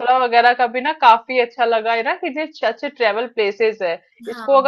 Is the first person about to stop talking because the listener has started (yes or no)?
no